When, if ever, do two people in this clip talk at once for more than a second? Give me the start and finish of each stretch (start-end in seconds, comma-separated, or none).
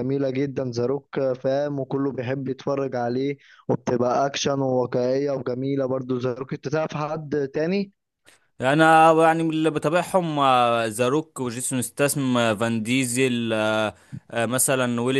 none